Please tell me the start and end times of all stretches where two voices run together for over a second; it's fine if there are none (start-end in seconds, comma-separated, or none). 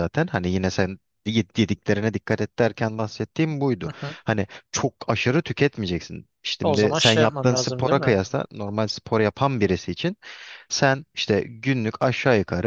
6.6-8.2